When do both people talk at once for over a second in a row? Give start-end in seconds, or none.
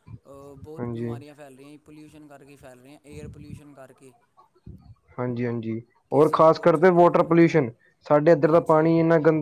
6.1-7.6